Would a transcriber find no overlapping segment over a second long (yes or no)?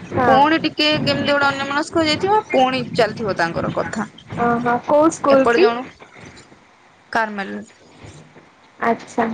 yes